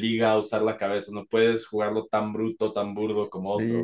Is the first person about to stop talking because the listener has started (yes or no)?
yes